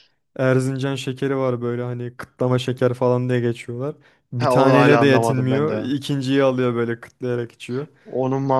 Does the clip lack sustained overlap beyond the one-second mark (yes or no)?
no